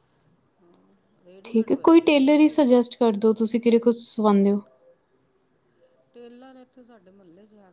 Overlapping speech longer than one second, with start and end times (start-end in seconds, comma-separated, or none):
1.4-2.9